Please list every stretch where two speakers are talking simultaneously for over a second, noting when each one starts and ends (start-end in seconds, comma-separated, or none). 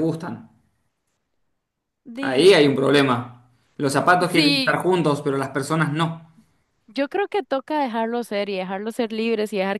none